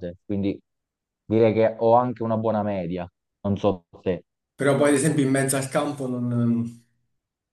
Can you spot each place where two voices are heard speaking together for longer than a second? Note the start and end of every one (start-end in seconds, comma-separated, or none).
none